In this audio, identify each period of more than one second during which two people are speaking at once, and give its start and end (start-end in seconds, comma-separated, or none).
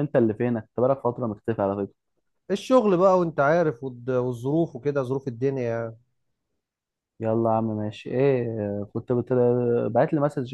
none